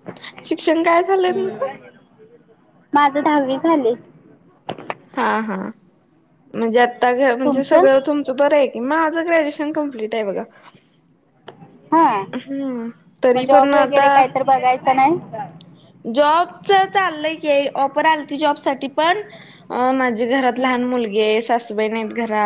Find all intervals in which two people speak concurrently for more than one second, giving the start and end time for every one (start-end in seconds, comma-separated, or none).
6.7-7.9